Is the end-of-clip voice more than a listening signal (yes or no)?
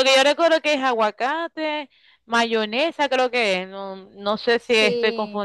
no